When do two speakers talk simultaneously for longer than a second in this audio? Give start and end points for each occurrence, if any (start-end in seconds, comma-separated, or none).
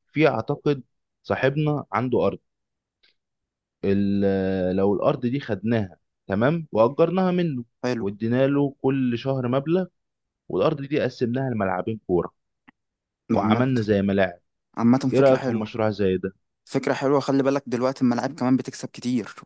none